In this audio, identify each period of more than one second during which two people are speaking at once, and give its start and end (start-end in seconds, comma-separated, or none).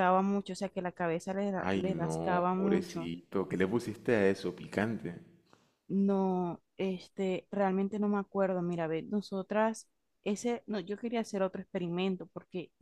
1.6-3.1